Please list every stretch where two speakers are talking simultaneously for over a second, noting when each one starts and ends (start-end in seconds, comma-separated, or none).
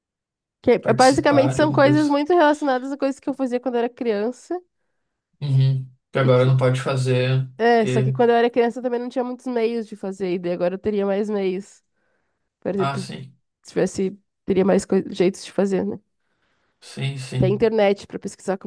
0.8-2.2